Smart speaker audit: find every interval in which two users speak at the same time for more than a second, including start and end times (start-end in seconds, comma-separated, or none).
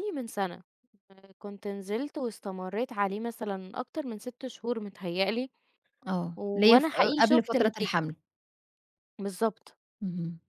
6.3-8.0